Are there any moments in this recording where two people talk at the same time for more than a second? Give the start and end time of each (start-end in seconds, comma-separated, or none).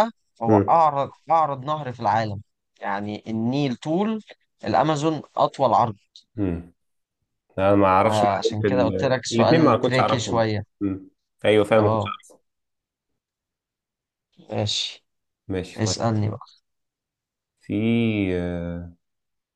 8.0-10.6